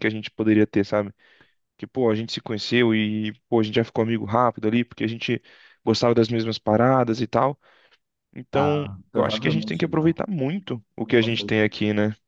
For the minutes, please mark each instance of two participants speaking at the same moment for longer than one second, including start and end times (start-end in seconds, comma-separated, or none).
8.5-10.2